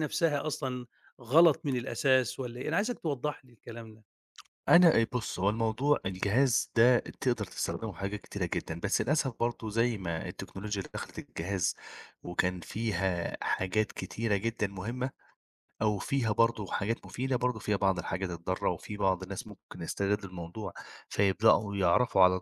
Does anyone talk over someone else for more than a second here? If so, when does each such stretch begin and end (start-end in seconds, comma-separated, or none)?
none